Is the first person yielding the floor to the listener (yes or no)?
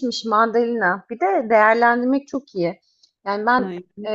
no